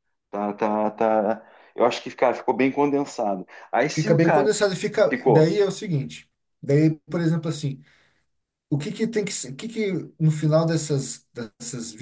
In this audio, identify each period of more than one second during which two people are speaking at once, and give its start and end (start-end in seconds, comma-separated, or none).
none